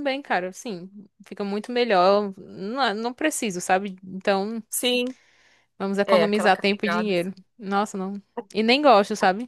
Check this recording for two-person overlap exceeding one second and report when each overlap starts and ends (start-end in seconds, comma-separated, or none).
6.1-7.3